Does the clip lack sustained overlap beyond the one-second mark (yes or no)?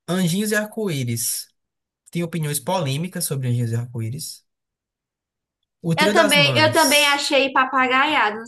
no